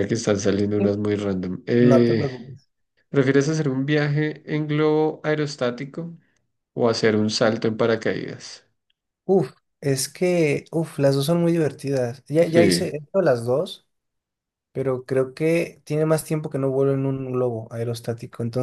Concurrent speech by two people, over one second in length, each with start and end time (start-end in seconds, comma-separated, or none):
none